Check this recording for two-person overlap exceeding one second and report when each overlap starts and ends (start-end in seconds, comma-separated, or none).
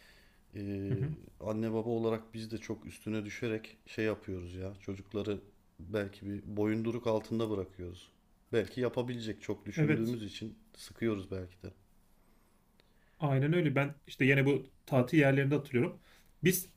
none